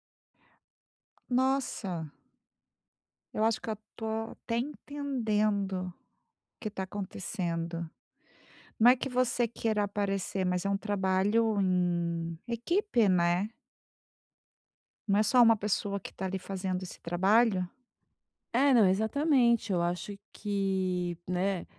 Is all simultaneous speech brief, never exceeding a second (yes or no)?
yes